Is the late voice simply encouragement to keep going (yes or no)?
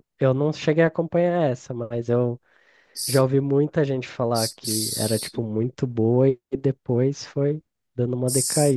no